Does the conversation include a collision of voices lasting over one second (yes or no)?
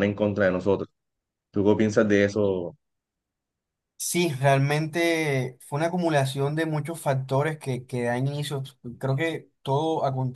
no